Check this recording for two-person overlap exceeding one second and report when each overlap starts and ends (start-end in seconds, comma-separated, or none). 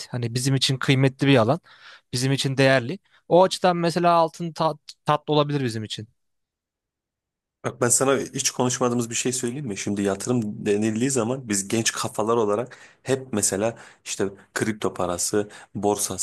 none